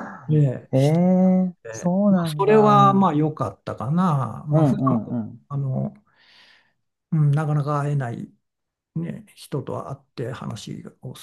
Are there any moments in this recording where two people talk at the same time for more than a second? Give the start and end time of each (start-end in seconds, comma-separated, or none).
1.5-3.2